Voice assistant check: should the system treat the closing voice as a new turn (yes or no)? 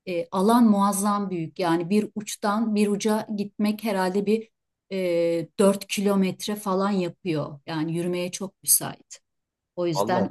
no